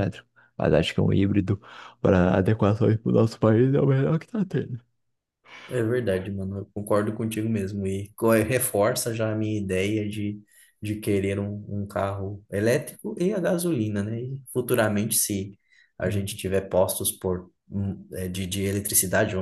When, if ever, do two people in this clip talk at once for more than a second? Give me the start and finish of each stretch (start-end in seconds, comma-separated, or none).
none